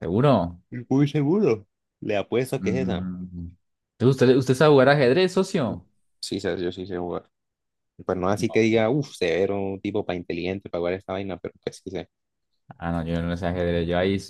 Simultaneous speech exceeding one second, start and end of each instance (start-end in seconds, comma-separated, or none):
none